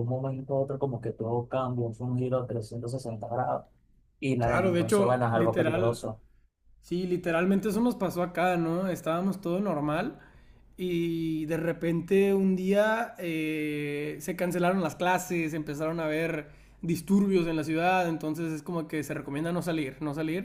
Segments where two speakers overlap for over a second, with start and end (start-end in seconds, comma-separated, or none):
4.4-6.0